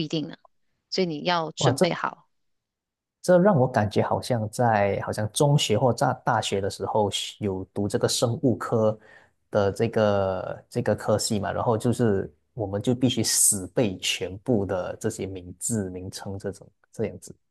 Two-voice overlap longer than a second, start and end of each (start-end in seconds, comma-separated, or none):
none